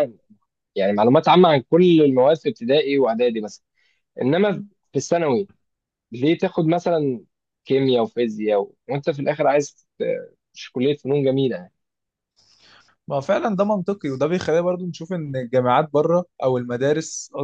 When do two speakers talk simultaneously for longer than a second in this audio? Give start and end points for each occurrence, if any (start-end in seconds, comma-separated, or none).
none